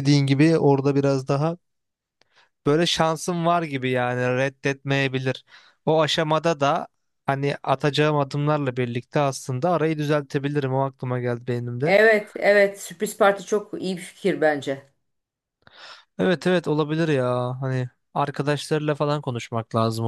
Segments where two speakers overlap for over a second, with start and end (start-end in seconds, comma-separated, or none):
none